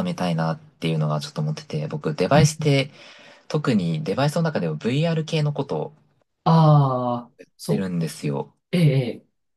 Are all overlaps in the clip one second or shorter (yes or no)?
yes